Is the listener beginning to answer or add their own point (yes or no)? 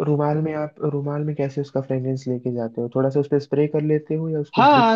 yes